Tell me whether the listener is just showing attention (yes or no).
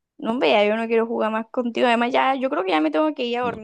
no